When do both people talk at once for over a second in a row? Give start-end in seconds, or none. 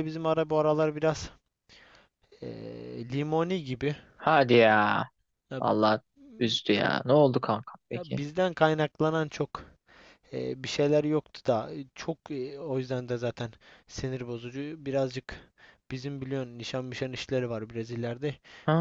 none